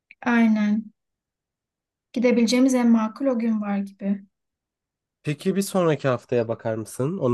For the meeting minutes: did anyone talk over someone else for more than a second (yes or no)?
no